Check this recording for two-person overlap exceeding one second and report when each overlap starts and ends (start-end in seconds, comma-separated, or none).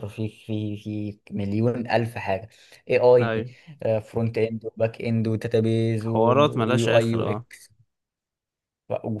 6.1-7.5